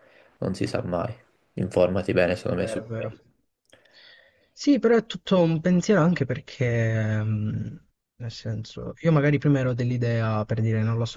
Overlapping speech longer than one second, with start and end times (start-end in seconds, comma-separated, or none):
none